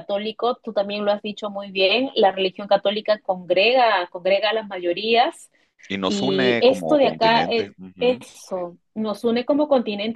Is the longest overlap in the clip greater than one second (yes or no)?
yes